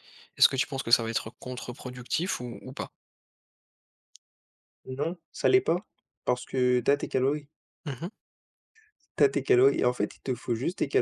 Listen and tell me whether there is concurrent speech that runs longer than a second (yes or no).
no